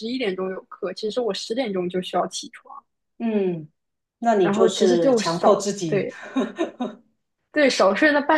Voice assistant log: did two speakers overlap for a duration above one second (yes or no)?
yes